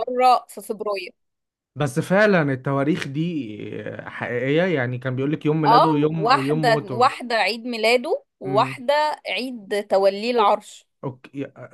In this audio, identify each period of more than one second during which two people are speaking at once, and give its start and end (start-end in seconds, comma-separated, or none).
5.7-7.1